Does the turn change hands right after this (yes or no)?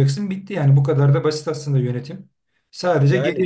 no